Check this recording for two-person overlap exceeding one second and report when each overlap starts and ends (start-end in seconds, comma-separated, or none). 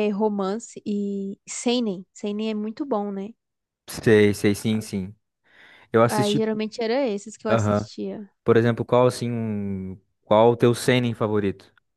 none